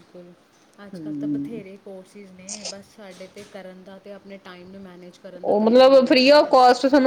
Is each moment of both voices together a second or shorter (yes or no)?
yes